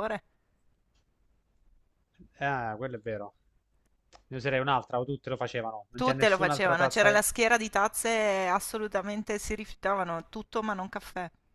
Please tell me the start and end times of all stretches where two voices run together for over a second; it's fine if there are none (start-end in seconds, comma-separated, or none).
5.9-7.2